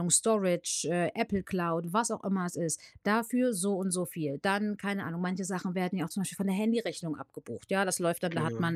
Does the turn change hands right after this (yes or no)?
no